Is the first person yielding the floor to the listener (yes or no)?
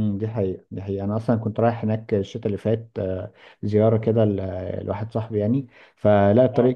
no